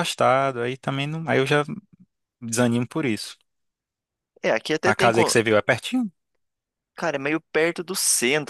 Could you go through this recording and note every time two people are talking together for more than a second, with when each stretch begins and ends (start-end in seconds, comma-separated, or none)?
none